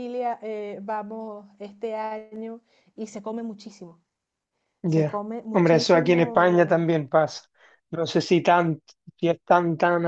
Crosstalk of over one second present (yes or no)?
yes